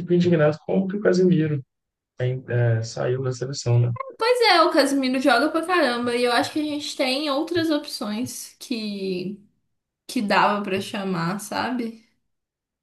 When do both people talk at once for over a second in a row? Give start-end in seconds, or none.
none